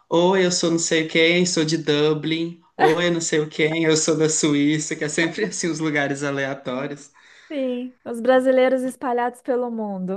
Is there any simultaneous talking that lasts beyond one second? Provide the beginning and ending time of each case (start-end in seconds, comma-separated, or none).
none